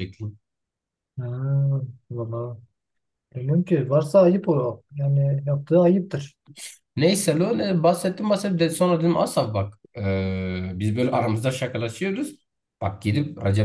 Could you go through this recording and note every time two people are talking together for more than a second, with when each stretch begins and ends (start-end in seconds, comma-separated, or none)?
none